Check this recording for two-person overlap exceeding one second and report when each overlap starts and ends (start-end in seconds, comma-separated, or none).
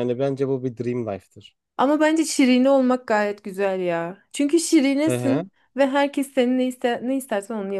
none